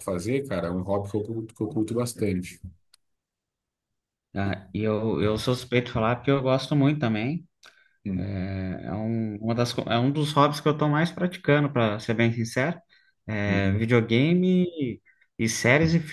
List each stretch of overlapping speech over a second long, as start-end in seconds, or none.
none